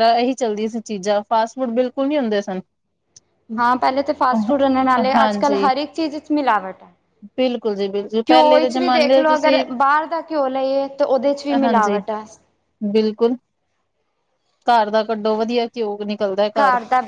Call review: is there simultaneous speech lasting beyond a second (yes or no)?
yes